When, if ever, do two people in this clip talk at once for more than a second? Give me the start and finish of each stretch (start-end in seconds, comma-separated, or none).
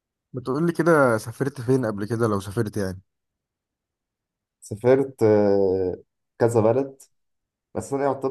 none